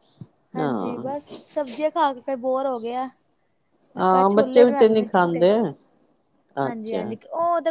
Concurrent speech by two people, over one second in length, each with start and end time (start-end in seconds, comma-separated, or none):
4.0-5.4